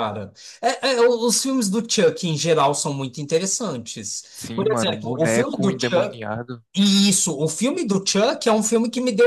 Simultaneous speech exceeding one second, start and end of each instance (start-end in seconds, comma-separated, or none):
4.3-6.2